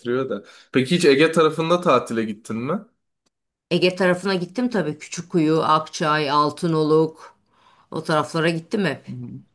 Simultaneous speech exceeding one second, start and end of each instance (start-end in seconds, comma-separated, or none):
none